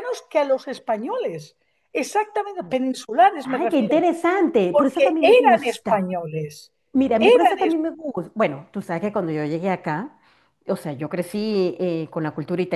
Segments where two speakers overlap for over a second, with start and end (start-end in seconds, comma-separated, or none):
4.7-6.1